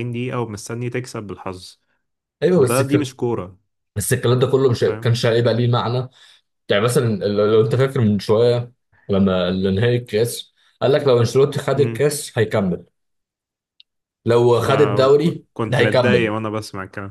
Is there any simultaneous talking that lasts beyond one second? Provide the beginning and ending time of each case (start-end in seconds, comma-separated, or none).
14.6-16.3